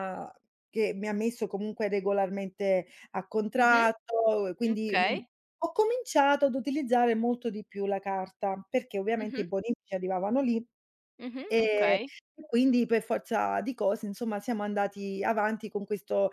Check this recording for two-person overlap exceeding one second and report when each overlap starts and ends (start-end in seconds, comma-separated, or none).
none